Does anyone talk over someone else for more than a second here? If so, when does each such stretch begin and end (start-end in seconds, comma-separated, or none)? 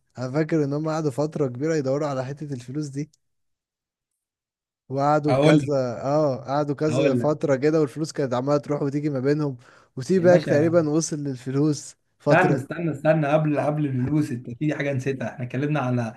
none